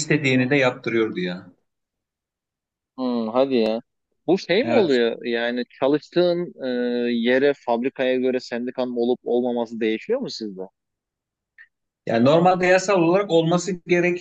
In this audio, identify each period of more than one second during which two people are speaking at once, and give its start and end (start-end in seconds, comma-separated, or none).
none